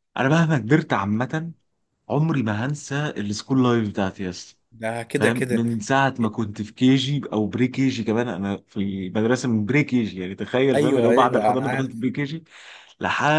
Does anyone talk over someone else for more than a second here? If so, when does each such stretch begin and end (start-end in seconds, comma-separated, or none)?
10.7-12.0